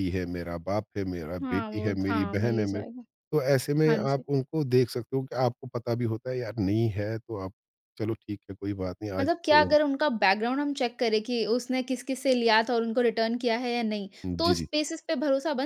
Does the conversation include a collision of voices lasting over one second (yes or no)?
yes